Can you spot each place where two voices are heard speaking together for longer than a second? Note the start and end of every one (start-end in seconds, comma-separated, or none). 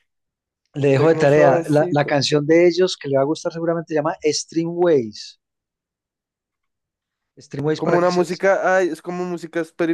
0.8-2.2